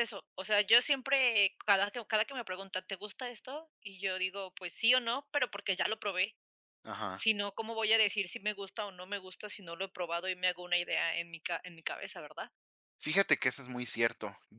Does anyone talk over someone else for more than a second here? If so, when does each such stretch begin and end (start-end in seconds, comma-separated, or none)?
none